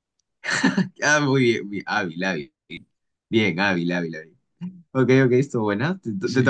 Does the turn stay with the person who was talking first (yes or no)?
no